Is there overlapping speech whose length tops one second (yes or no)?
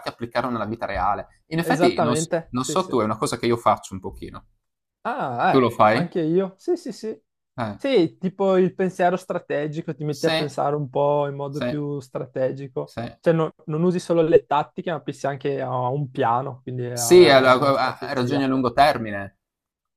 yes